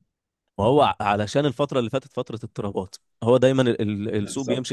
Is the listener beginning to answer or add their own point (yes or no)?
no